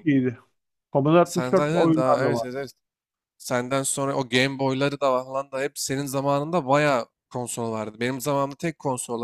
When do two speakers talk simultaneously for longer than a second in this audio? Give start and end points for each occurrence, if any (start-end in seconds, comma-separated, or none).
1.2-2.5